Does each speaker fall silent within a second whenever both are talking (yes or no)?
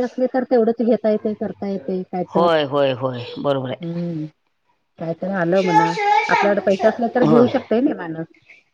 yes